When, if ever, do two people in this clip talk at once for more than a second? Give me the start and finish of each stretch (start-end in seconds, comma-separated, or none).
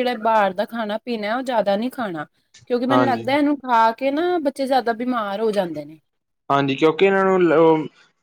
none